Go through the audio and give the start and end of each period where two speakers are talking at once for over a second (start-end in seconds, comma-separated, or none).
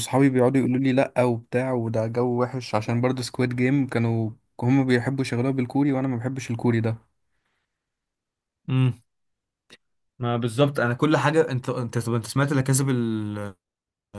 none